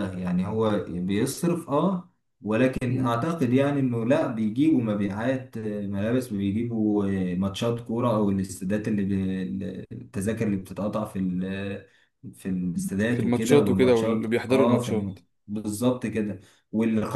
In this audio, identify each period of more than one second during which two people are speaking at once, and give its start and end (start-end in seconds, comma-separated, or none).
13.0-15.2